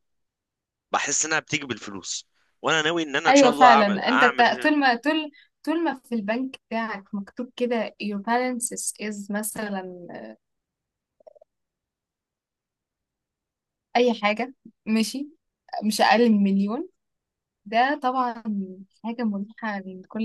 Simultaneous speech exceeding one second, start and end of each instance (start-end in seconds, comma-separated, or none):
3.3-4.7